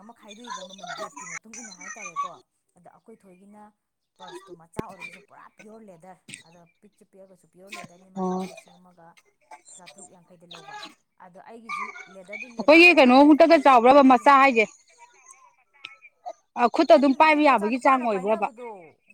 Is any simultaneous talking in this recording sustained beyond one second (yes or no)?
yes